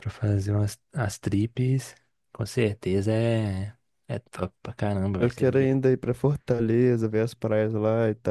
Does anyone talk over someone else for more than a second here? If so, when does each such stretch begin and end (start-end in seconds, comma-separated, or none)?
none